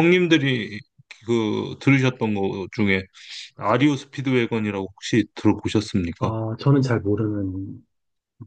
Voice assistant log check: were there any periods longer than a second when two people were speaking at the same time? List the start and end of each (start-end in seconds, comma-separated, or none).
none